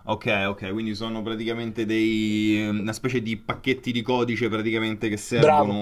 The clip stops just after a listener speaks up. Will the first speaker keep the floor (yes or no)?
yes